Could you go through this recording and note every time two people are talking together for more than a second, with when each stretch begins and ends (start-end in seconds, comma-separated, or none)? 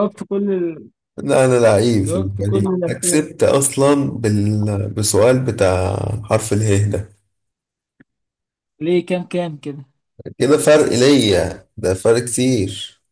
2.0-3.2